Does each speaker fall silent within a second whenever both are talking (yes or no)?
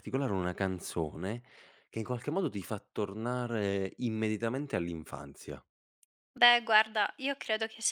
yes